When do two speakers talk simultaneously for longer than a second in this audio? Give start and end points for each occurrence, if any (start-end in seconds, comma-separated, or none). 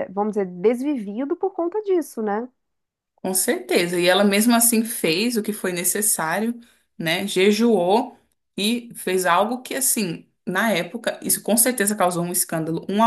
none